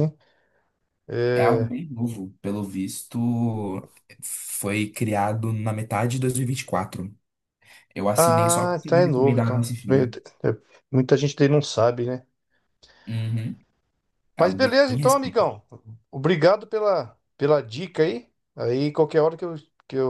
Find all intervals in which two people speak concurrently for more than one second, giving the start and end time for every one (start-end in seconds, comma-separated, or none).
8.2-10.2, 14.4-15.6